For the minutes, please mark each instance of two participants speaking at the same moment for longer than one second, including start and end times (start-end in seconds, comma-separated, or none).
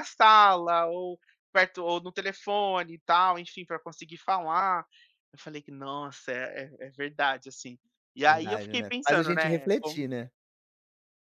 8.2-10.0